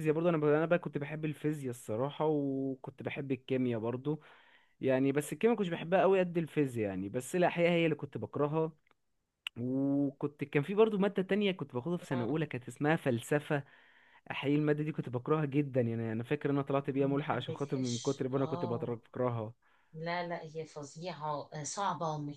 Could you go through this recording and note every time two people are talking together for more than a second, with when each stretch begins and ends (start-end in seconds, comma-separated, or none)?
16.8-19.0